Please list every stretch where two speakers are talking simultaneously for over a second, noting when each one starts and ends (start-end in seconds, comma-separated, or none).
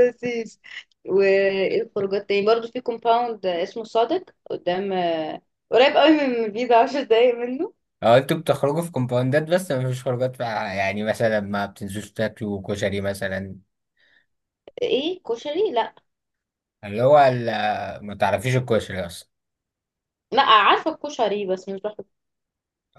none